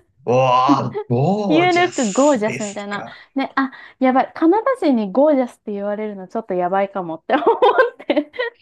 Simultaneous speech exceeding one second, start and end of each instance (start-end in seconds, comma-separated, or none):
1.5-3.2